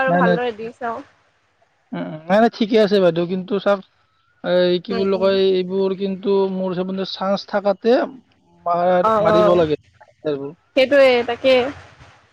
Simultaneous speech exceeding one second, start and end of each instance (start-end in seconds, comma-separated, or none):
9.1-10.5